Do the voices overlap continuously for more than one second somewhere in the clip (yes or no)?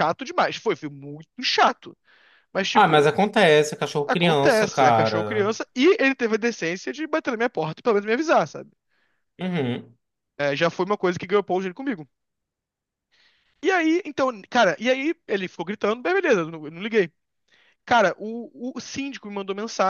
yes